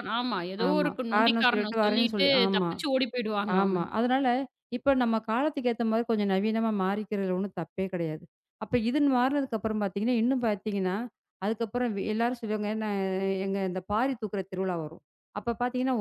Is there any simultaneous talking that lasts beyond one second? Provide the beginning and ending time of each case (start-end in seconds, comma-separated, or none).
0.7-2.7